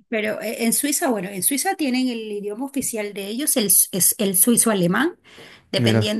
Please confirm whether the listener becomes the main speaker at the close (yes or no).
no